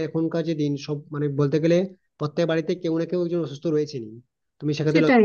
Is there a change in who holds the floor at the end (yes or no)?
yes